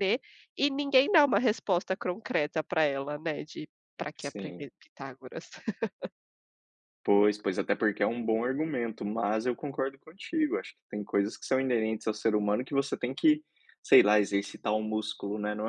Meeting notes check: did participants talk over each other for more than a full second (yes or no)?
no